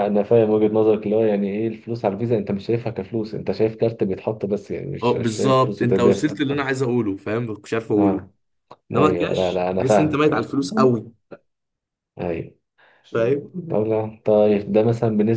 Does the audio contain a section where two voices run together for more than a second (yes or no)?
yes